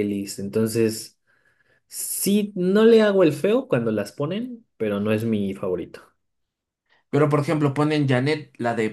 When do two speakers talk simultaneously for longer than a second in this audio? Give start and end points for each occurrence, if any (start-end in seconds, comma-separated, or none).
none